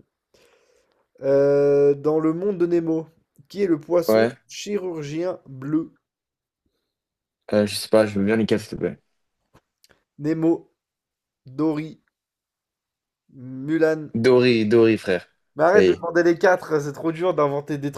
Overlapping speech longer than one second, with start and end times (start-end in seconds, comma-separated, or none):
none